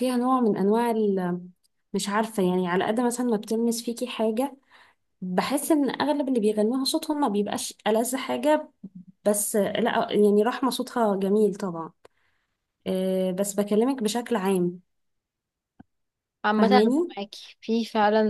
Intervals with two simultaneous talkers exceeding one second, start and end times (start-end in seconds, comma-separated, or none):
none